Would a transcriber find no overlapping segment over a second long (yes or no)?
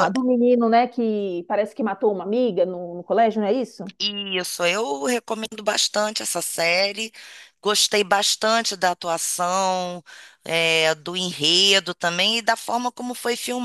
yes